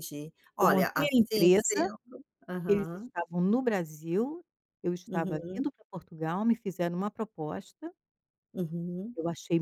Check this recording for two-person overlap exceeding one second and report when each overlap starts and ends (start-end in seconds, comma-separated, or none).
0.6-1.9